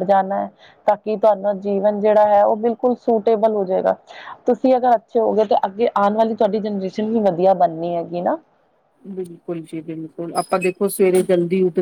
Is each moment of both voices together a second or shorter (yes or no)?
yes